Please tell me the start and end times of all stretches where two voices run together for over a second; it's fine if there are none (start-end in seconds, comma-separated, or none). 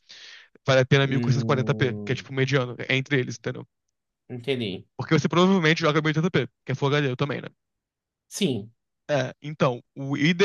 1.1-2.3